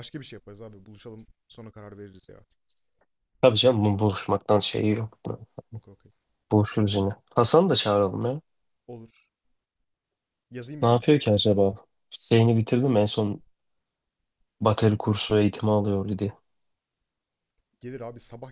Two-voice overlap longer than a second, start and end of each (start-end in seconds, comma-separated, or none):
none